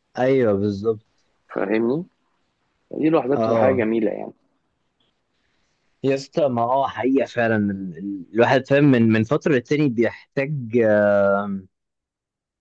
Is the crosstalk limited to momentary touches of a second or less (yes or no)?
yes